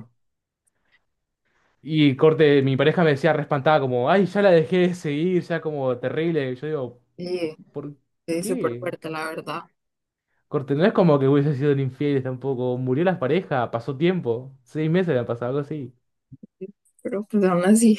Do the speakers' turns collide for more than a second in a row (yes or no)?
no